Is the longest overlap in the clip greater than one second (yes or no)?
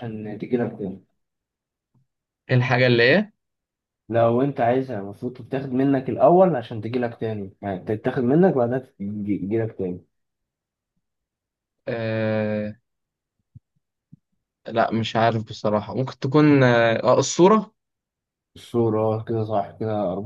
no